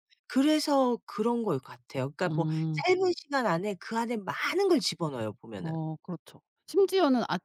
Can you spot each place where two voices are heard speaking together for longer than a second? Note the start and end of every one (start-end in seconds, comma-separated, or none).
none